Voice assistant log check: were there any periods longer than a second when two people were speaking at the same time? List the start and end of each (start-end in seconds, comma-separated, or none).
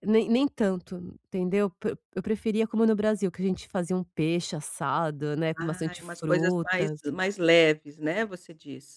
5.5-7.0